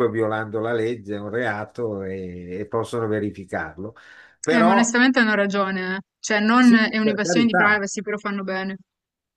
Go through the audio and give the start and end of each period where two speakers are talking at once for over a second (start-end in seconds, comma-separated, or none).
6.6-7.8